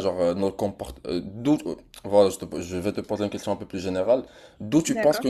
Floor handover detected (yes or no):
no